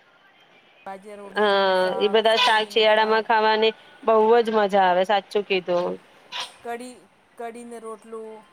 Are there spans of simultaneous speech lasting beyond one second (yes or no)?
no